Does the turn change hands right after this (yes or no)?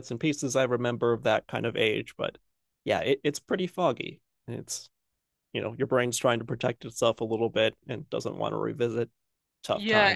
yes